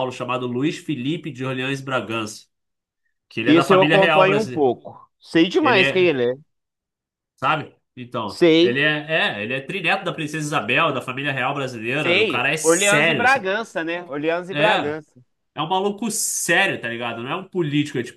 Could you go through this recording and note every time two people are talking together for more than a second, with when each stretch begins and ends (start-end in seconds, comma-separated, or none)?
3.5-4.7, 12.0-13.5